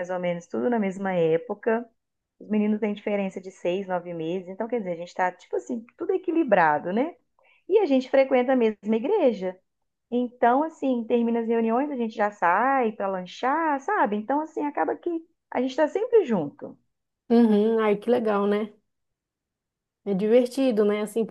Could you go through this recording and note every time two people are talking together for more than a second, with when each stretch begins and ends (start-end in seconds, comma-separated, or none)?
none